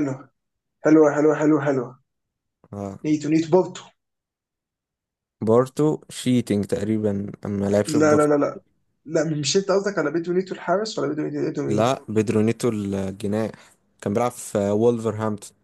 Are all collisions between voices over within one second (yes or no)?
yes